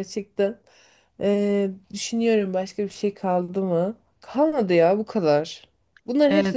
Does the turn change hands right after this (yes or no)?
no